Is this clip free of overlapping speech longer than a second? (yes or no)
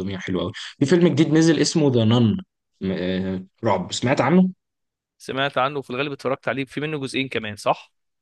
yes